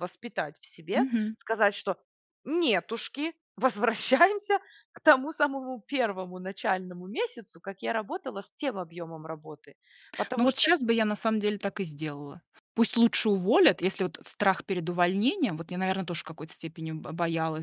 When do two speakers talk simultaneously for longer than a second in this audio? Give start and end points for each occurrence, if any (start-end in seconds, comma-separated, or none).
none